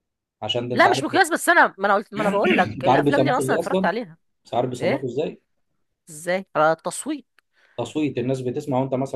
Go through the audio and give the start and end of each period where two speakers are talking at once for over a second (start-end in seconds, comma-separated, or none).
2.5-3.9